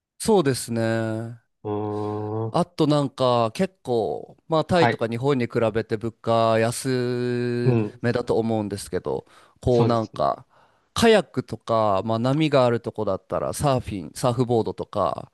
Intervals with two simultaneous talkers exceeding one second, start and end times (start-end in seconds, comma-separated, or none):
none